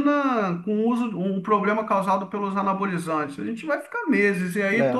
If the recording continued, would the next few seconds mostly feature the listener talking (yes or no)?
no